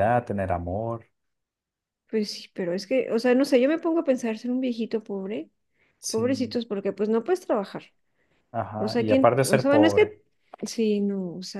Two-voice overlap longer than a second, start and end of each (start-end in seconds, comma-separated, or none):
8.8-10.1